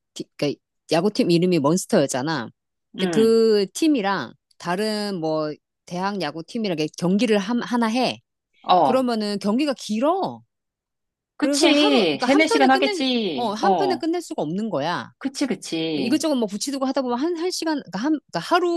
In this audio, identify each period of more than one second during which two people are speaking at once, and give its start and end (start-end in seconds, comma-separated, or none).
11.4-14.1